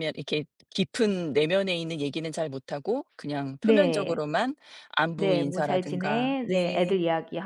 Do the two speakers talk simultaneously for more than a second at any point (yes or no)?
yes